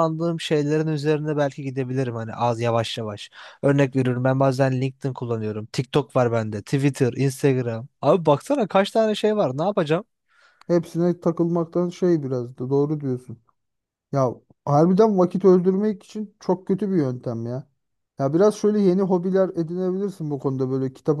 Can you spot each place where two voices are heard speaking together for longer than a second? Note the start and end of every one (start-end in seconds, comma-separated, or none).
none